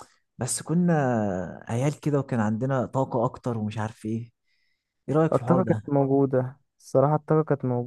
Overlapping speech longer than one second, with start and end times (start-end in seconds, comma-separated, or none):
none